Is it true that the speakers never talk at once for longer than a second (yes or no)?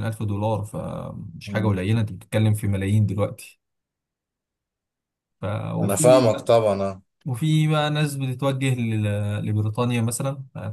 yes